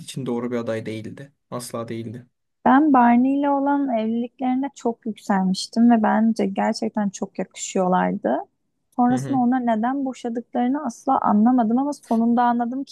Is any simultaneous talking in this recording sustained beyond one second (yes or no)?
no